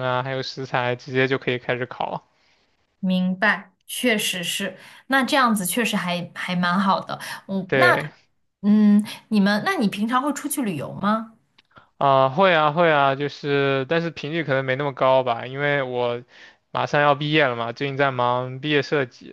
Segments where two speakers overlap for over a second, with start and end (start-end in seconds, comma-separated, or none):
none